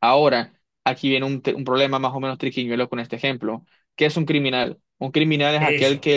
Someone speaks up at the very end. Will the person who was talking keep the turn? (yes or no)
yes